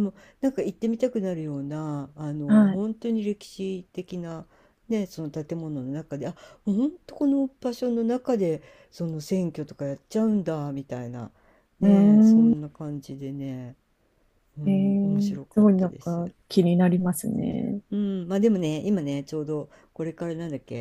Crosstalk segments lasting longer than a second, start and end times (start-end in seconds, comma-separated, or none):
14.6-16.3